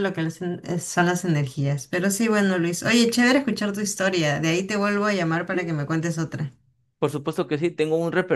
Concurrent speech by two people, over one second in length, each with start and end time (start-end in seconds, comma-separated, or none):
none